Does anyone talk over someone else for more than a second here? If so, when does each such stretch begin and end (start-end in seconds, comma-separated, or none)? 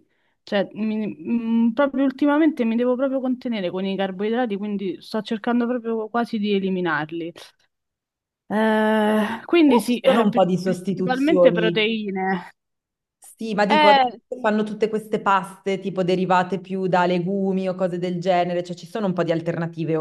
9.6-11.9